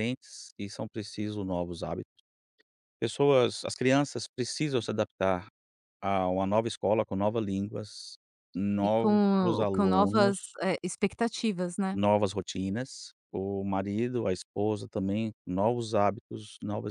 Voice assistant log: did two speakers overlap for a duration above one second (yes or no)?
yes